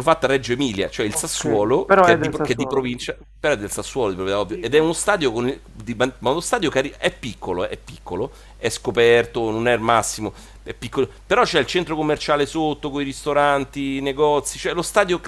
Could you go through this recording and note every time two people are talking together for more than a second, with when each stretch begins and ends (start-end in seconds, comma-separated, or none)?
1.1-2.9